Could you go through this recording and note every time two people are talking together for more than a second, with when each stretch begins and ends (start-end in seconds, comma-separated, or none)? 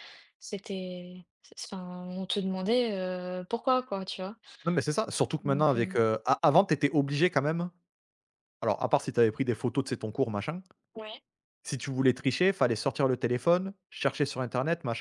none